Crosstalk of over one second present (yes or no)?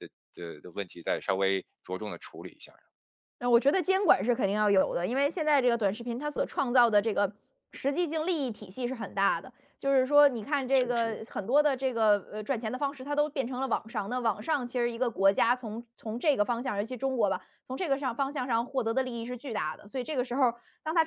no